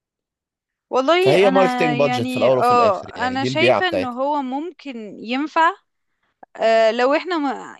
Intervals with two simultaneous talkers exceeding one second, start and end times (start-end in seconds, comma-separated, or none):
1.2-4.2